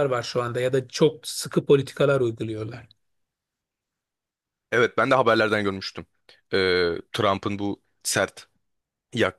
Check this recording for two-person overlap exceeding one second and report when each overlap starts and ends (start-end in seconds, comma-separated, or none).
none